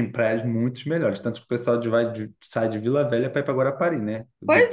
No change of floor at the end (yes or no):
no